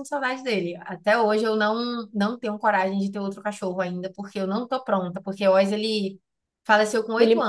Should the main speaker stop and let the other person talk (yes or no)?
no